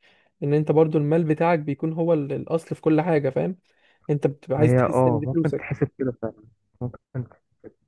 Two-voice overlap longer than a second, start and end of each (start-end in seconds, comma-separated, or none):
4.6-5.8